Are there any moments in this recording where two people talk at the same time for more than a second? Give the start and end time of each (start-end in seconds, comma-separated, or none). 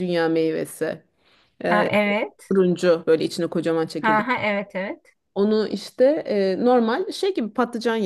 none